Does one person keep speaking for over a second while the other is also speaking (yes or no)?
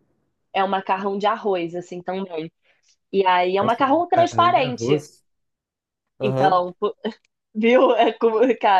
yes